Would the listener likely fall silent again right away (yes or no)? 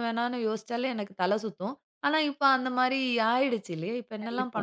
no